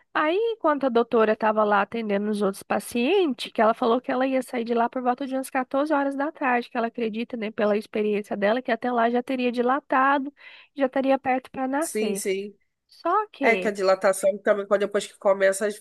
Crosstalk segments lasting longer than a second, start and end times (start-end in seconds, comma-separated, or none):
none